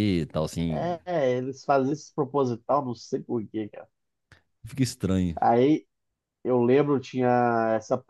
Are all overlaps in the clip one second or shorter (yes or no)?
yes